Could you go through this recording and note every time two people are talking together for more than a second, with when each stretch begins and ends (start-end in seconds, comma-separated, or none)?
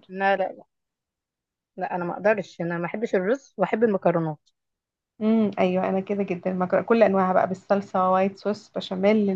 none